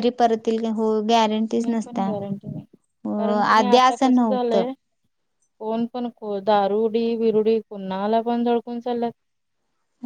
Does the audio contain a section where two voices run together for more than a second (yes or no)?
yes